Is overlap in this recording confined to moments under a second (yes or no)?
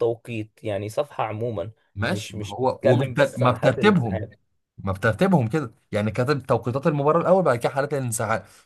no